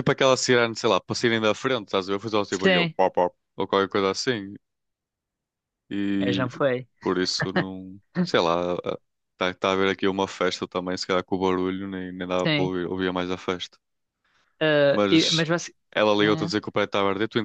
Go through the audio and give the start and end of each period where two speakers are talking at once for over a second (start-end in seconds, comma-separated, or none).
none